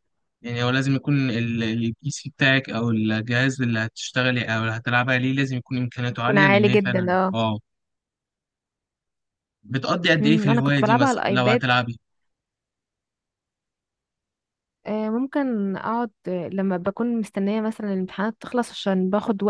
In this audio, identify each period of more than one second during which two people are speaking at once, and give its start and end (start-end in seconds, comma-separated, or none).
6.1-7.4, 10.2-11.6